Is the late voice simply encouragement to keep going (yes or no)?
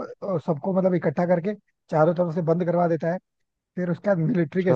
yes